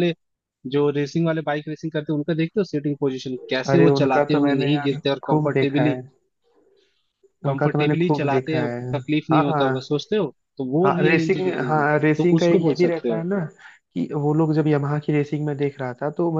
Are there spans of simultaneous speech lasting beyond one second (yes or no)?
yes